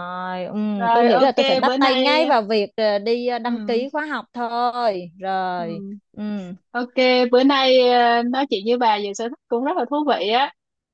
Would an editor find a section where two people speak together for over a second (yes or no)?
yes